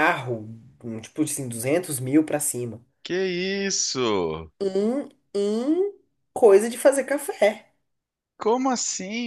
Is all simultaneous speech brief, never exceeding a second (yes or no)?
yes